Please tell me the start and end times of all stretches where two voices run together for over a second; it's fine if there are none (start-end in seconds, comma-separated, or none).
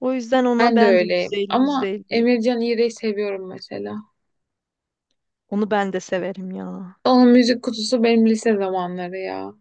0.6-2.2